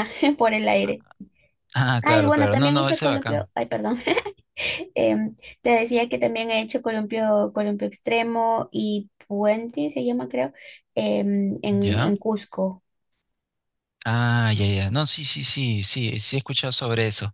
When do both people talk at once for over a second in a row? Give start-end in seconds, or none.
2.0-3.5